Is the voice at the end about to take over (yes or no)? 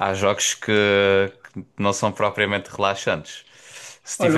yes